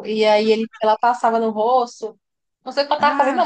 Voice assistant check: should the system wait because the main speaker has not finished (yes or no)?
yes